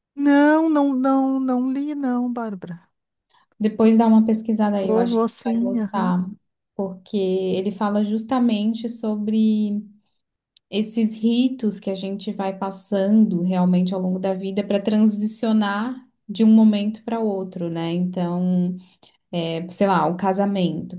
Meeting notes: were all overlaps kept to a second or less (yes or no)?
no